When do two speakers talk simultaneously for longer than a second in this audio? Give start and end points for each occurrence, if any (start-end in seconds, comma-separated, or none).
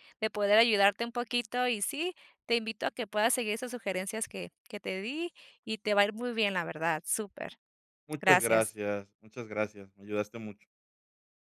none